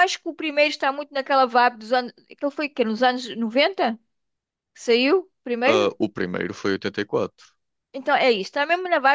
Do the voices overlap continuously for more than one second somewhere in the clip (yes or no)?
no